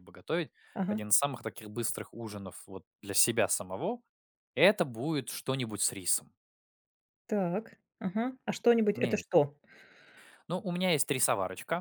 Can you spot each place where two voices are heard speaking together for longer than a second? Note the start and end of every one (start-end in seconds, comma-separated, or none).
none